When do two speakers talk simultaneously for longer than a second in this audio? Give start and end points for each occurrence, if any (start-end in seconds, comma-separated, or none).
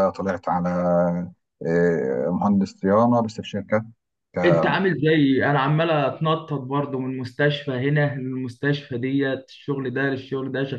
none